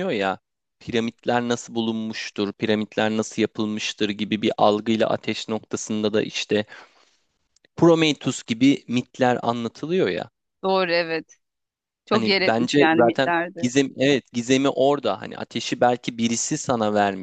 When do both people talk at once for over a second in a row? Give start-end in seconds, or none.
12.1-13.7